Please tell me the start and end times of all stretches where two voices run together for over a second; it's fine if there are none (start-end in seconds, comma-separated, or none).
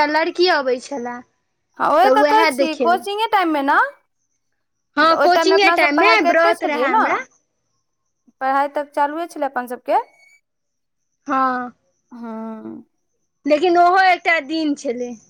5.0-7.0